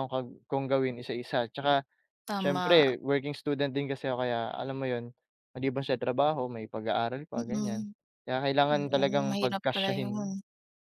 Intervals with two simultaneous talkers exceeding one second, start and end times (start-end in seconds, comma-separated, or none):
8.7-10.3